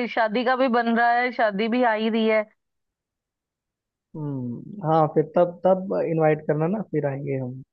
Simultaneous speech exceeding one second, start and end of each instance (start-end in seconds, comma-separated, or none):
none